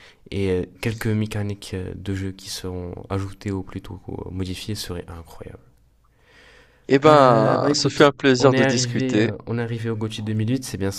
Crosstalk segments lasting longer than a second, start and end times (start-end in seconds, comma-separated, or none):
7.1-9.3